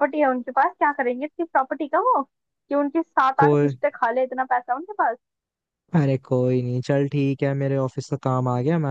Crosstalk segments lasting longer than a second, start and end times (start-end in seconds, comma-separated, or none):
none